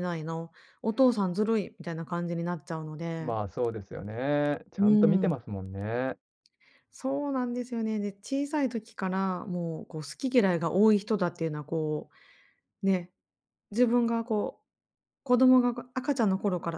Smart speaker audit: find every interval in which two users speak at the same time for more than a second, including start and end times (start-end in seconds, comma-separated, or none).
none